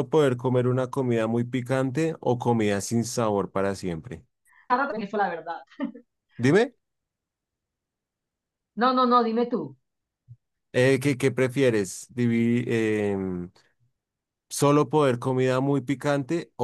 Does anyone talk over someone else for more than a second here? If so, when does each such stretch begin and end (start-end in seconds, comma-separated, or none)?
none